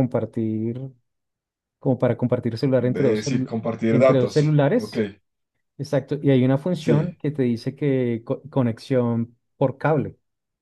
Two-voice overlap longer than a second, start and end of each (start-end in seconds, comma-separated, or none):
2.9-5.0